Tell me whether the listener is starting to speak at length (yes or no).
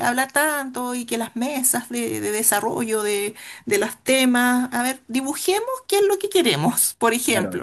yes